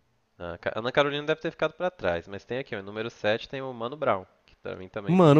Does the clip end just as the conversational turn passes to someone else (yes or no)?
yes